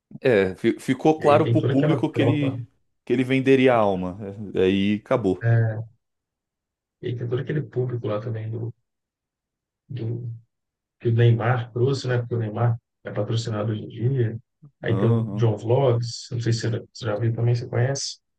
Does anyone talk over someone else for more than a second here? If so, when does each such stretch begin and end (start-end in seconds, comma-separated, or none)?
1.2-2.6